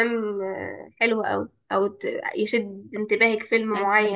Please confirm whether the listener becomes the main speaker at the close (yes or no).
no